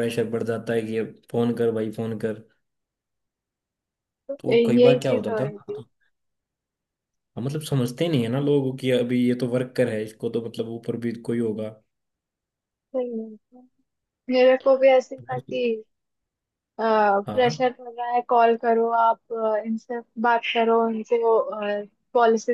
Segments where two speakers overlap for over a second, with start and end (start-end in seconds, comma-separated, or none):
4.4-5.8